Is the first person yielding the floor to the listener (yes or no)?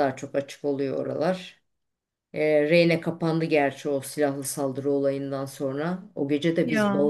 no